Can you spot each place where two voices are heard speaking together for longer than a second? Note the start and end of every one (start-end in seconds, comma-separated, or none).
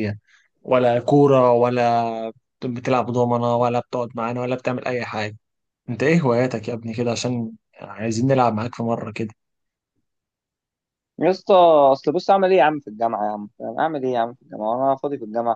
none